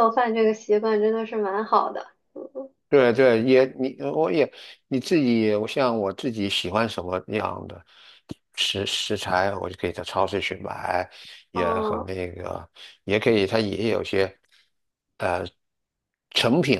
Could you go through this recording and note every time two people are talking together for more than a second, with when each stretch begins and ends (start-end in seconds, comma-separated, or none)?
none